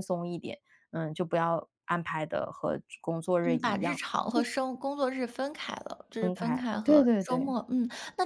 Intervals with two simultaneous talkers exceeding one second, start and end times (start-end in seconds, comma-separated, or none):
6.2-7.5